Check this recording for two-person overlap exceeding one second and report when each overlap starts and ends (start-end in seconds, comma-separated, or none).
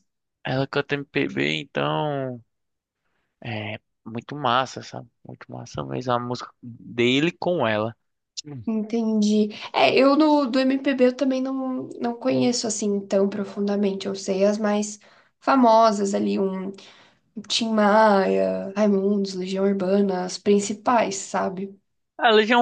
none